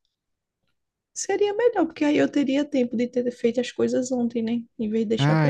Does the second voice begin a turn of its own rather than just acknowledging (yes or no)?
yes